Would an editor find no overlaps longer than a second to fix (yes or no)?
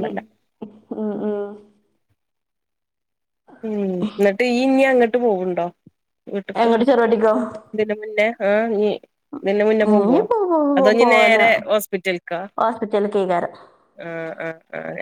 yes